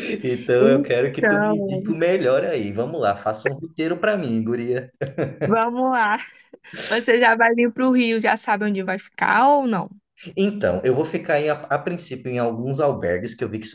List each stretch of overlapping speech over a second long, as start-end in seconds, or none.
0.6-1.8